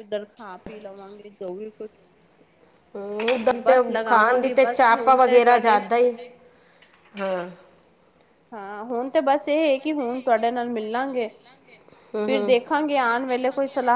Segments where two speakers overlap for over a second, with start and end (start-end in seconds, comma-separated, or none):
3.6-5.8